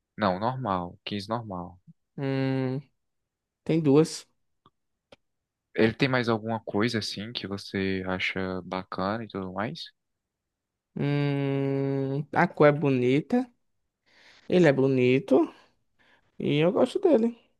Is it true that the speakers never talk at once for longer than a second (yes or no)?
yes